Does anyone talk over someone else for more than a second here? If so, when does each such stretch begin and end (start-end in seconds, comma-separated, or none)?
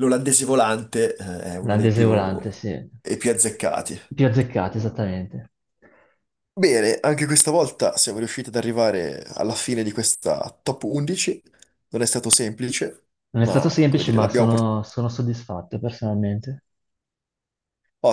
13.3-14.7